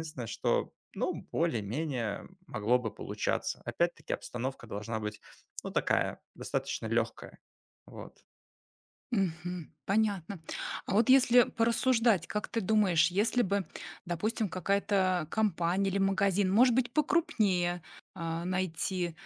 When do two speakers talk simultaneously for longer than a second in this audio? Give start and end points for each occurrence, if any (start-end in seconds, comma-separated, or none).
none